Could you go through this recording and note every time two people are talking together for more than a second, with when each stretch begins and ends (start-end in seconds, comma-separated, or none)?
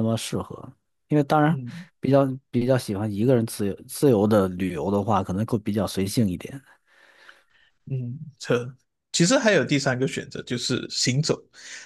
none